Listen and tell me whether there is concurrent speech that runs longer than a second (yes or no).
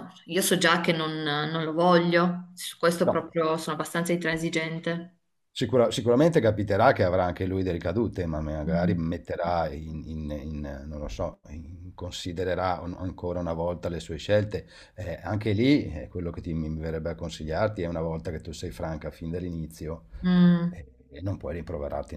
no